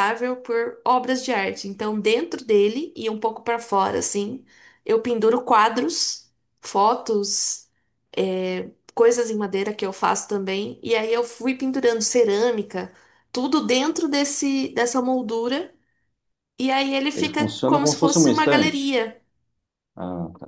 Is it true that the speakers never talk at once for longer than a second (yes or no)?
no